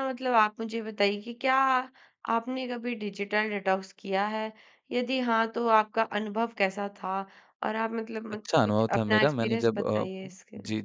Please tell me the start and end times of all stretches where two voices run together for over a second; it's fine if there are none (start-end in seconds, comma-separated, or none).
8.3-10.1